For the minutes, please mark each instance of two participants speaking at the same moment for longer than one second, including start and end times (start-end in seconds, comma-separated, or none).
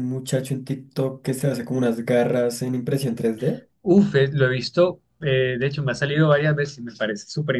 none